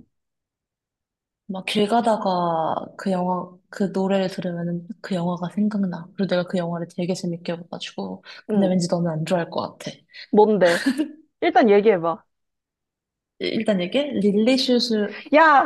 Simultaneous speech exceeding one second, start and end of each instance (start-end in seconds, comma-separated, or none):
none